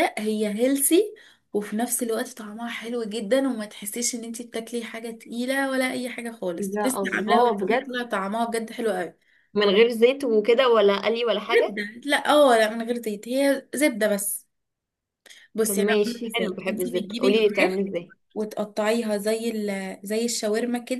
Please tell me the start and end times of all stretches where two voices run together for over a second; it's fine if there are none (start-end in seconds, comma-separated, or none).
6.6-7.9, 15.6-17.8